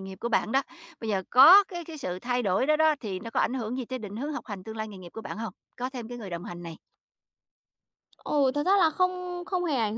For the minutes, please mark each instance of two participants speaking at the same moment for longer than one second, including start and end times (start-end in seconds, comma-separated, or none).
none